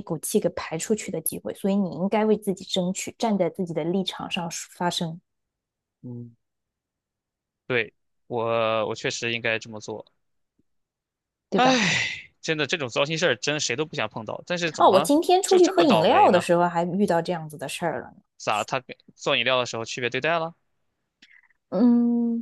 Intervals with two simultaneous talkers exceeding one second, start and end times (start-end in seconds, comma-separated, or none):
14.8-16.4